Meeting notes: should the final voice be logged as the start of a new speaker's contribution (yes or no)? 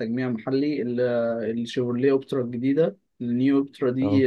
no